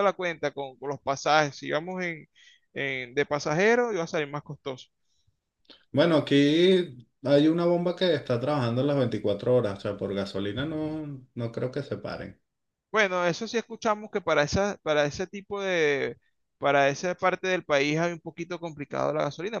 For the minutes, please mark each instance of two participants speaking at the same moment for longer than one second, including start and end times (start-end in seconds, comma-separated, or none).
none